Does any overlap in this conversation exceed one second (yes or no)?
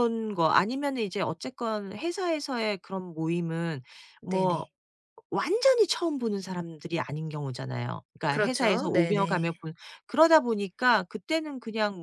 yes